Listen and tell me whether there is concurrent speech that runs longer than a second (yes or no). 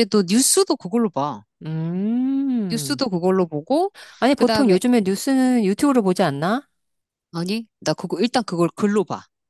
no